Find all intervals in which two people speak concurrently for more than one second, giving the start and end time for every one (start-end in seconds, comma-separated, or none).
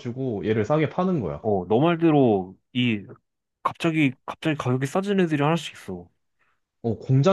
none